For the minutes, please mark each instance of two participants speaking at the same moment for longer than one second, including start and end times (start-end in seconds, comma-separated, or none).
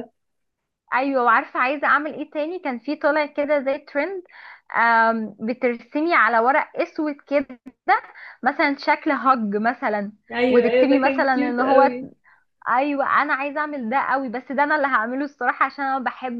10.5-11.9